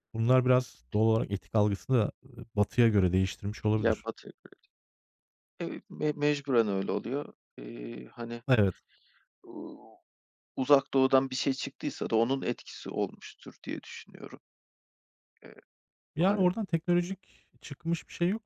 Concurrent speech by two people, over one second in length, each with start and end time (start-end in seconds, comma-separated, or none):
none